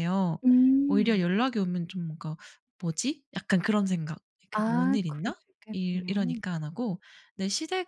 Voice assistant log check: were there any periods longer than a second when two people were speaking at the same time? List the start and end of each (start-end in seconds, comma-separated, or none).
4.5-6.4